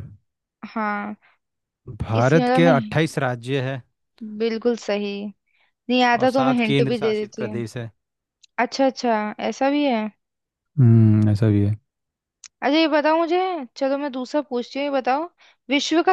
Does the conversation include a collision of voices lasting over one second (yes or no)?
yes